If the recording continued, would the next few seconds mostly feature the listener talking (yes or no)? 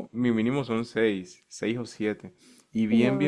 no